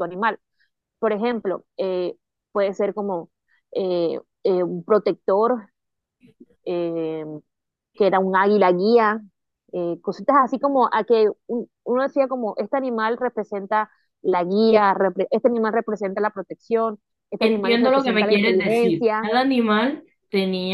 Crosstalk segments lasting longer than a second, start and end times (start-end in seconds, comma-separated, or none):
17.4-19.2